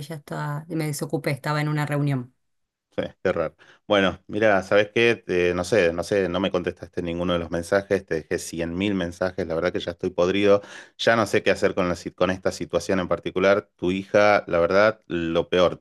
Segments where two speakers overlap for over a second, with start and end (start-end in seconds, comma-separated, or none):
none